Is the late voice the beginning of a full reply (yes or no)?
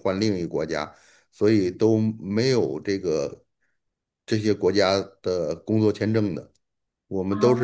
no